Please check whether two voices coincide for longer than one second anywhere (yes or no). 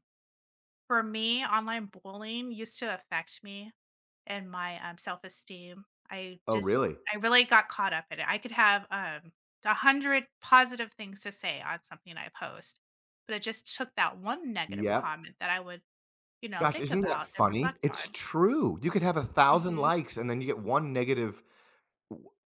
yes